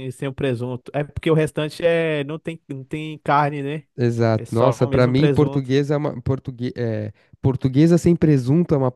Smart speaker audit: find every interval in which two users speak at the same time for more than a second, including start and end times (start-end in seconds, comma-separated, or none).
4.4-5.8